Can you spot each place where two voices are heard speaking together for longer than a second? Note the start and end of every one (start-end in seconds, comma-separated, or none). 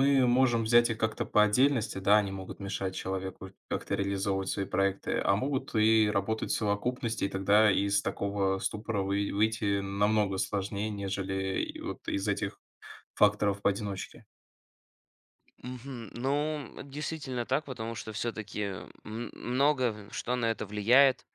none